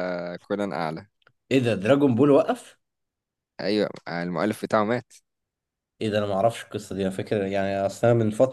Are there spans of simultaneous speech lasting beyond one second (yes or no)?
no